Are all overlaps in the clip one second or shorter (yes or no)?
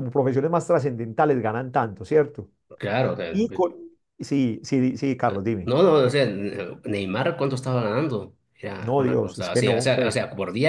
no